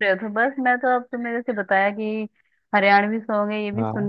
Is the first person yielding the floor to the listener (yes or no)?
no